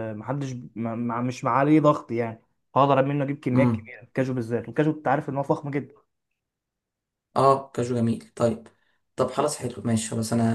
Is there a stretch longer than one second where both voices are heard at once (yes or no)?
no